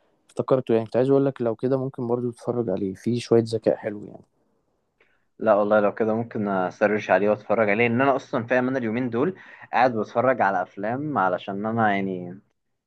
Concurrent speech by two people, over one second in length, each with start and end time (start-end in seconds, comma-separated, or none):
none